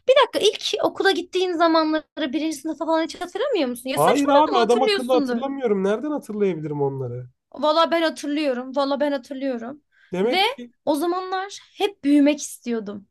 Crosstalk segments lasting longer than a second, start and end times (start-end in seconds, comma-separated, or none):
3.9-5.4